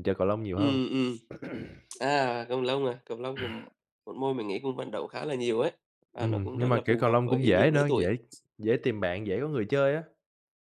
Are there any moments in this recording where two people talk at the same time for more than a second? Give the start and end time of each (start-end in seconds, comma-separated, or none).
6.2-8.1